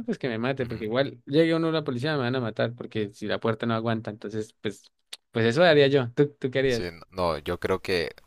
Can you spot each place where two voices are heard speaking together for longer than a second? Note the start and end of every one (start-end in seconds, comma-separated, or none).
none